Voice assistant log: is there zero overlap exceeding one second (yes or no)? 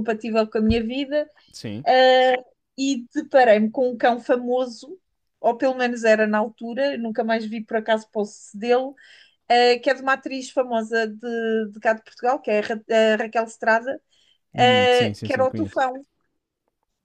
no